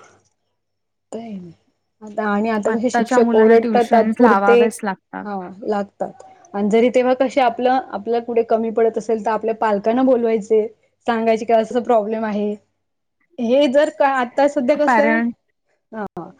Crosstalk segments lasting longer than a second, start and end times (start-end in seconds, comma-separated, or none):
2.7-4.6